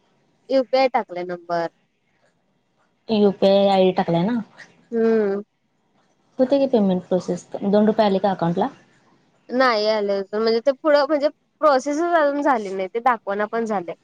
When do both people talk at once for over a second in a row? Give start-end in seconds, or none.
none